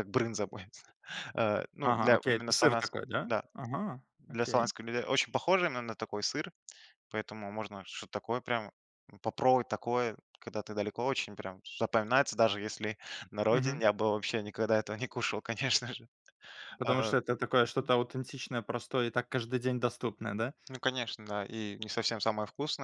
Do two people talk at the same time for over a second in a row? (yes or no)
yes